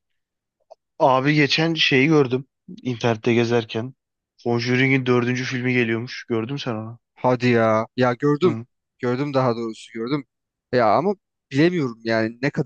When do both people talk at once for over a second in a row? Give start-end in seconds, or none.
none